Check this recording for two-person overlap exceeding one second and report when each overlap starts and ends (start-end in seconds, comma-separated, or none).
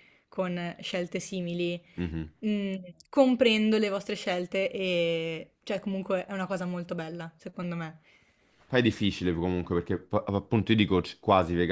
none